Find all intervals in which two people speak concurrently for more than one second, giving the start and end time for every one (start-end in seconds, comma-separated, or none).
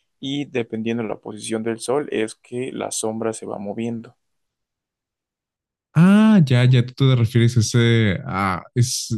none